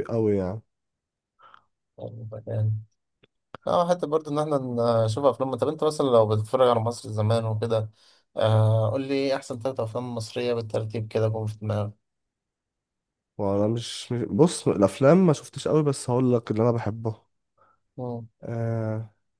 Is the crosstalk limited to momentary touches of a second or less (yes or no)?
yes